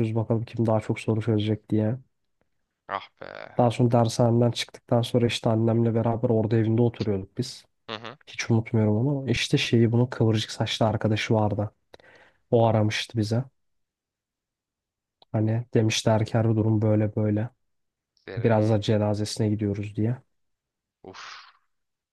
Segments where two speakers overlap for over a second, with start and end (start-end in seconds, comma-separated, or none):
none